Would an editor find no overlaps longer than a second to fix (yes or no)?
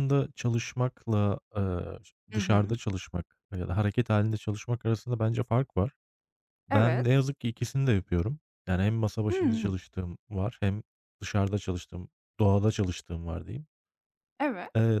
yes